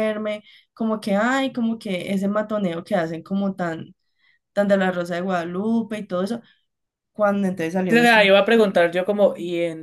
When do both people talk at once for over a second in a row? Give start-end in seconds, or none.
none